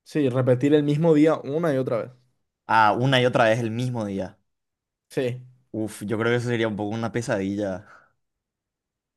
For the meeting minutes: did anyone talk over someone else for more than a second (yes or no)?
no